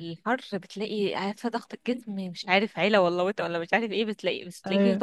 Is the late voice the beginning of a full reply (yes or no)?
no